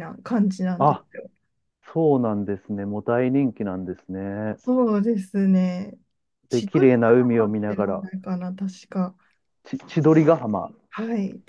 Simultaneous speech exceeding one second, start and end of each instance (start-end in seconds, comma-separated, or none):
6.5-8.1